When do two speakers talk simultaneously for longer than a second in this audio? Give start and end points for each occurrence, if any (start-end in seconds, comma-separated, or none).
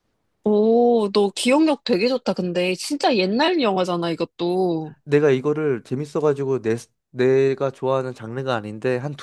none